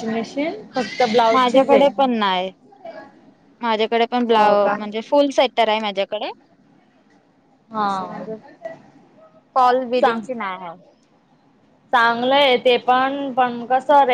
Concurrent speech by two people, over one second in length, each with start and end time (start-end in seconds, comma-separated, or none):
none